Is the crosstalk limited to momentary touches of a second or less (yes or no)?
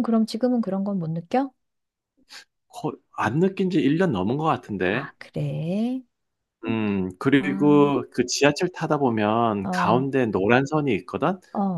yes